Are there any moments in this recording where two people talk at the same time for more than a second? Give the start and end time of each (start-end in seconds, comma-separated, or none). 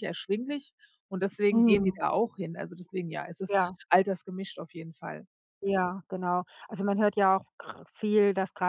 none